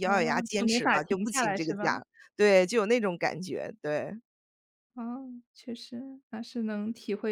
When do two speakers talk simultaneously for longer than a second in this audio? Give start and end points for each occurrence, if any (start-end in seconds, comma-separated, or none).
0.5-2.0